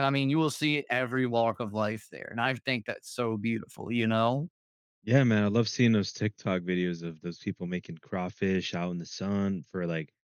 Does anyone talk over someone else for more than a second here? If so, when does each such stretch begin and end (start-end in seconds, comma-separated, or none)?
none